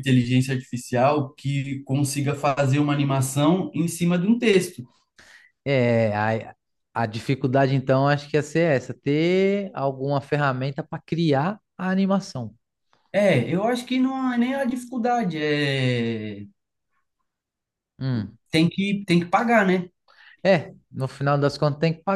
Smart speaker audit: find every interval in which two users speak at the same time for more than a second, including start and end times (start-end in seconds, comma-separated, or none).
none